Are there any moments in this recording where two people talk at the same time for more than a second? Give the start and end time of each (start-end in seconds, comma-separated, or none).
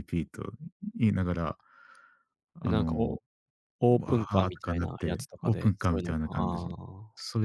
4.0-6.7